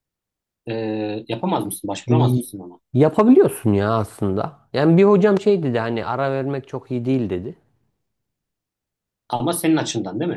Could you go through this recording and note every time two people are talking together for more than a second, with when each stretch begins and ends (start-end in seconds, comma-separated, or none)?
none